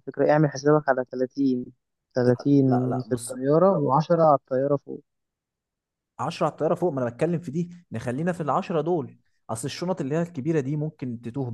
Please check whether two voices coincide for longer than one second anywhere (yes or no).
no